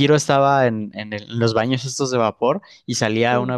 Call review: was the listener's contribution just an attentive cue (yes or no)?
yes